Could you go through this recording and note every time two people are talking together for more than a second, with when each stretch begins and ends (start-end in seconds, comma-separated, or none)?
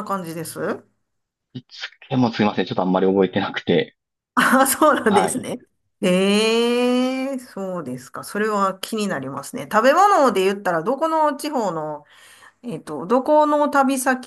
none